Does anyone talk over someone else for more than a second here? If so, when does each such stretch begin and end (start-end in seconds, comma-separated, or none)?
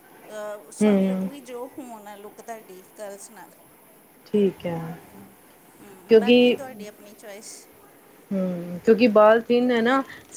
none